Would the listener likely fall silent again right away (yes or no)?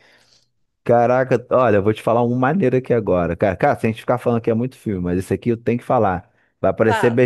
yes